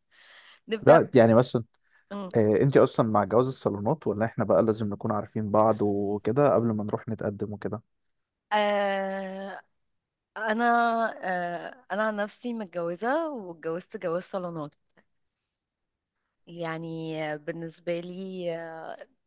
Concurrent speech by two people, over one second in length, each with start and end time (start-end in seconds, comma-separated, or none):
none